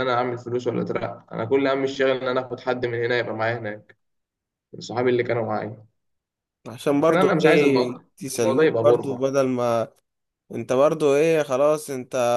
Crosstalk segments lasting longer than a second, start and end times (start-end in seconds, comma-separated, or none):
7.0-9.3